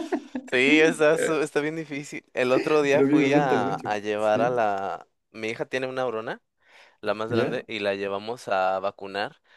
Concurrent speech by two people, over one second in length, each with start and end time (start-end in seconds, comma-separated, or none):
2.9-4.6